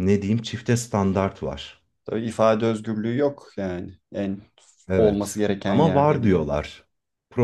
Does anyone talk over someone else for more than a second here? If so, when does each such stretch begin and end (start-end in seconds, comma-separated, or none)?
4.9-6.5